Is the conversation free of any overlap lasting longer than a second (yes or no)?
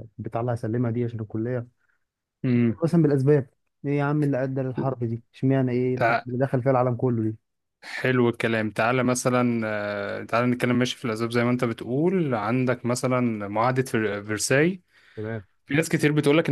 yes